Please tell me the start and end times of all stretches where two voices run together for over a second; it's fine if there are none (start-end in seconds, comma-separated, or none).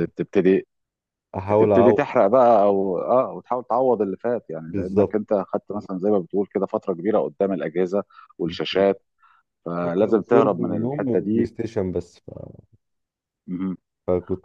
9.8-11.5